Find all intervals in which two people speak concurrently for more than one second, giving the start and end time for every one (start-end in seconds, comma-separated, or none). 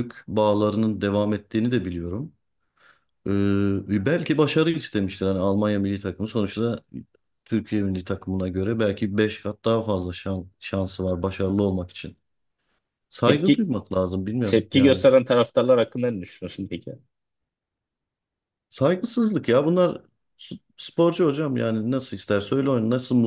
none